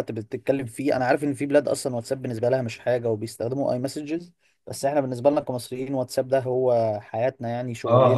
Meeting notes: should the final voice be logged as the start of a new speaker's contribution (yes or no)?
yes